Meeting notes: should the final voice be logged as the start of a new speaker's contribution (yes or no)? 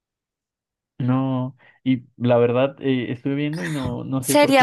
yes